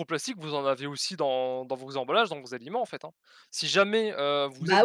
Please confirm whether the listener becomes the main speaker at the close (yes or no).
yes